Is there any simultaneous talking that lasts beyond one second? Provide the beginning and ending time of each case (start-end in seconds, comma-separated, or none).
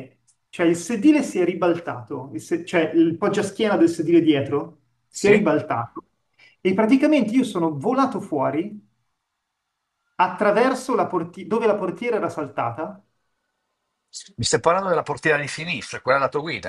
none